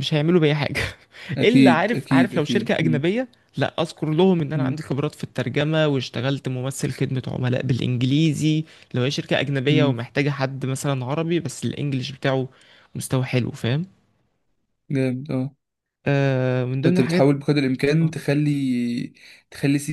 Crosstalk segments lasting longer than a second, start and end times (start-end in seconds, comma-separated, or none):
1.4-3.0